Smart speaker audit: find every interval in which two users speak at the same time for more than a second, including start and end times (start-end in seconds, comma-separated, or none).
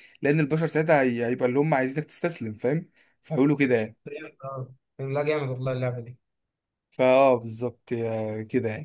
none